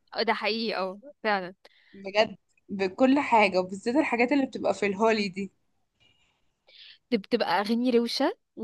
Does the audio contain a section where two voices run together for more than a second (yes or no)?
no